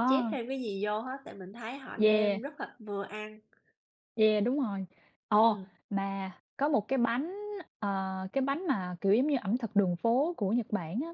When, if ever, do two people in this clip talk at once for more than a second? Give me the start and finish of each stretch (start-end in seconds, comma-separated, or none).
none